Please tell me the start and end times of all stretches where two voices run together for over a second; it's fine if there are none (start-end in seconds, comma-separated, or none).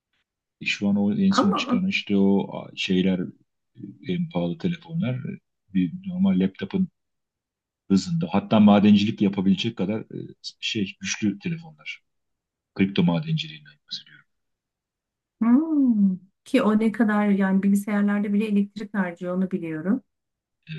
none